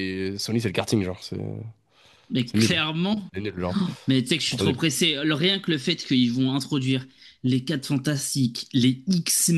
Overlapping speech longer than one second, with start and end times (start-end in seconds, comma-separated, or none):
none